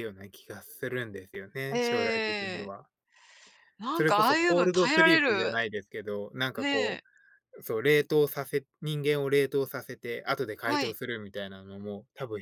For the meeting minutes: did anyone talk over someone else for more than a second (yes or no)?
yes